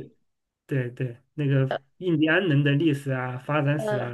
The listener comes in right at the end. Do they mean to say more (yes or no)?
no